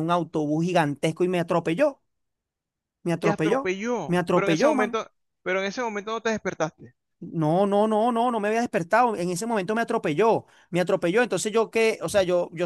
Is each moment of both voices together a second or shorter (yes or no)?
no